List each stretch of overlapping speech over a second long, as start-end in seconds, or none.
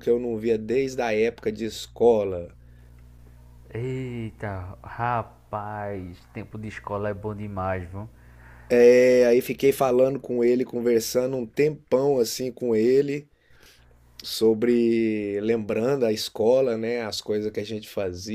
none